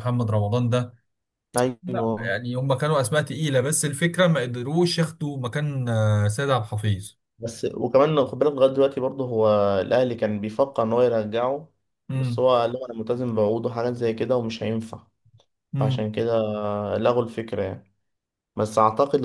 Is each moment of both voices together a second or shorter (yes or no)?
yes